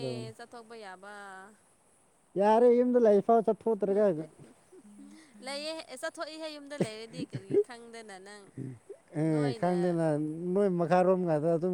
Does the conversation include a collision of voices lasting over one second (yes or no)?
no